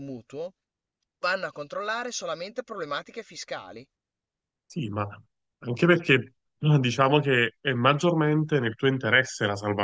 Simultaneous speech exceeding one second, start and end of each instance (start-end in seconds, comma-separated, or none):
none